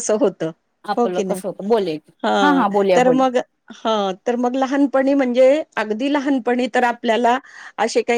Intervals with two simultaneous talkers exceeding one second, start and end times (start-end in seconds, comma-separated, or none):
none